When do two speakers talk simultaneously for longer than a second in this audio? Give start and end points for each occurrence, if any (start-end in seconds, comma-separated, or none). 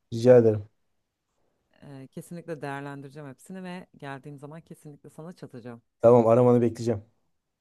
none